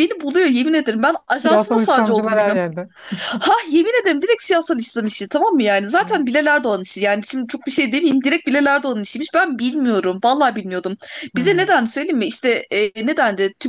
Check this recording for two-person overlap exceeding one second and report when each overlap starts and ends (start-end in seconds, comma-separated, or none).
1.3-2.6